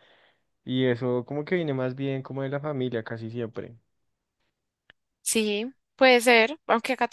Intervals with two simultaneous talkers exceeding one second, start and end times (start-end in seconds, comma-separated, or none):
none